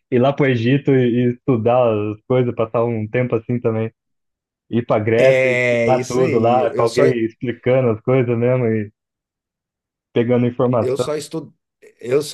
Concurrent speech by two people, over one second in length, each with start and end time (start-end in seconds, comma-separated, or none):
5.2-7.0